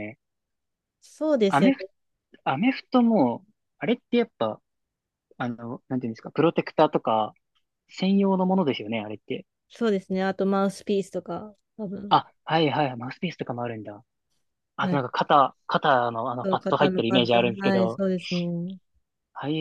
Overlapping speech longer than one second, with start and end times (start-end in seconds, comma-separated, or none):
16.4-18.0